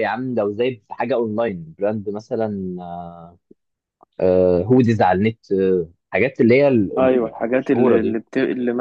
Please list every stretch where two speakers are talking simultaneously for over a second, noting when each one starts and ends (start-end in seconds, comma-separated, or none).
7.0-8.2